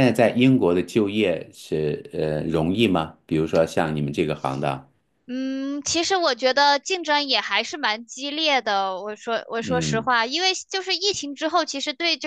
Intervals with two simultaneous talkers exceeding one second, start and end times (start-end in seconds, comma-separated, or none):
none